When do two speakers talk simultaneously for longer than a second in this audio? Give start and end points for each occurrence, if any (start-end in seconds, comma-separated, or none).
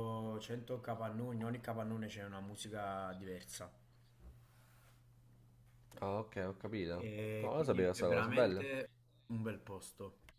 6.9-8.7